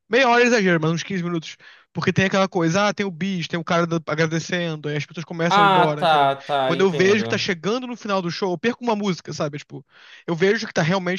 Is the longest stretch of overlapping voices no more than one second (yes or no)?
no